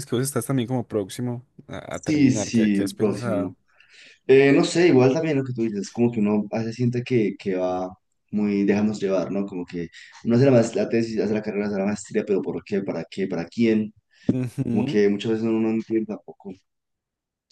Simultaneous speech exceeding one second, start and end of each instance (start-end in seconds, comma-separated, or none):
1.9-3.5